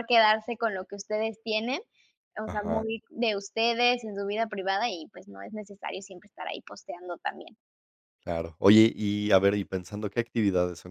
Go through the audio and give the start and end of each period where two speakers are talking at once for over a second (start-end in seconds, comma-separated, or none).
none